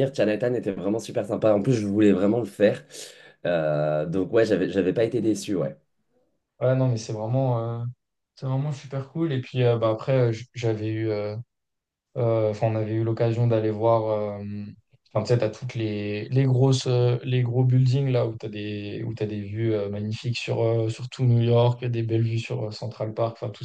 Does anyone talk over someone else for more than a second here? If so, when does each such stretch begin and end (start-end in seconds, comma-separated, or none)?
none